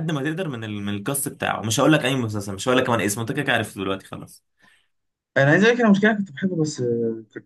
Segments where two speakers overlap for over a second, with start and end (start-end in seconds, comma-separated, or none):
none